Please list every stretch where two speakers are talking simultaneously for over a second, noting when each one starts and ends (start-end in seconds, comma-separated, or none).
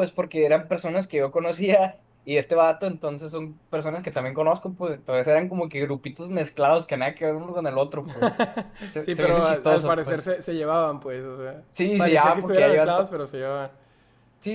9.0-10.3, 11.7-13.1